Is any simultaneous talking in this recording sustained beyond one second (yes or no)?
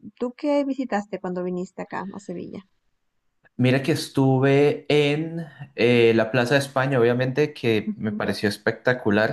no